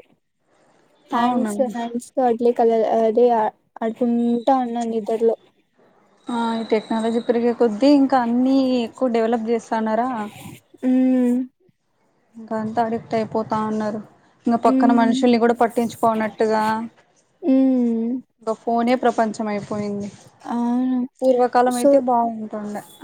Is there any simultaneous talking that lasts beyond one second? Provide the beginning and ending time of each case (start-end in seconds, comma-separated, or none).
none